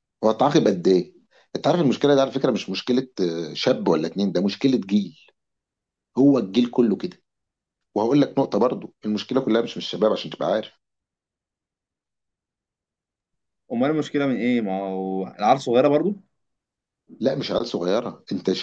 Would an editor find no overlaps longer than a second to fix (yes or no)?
yes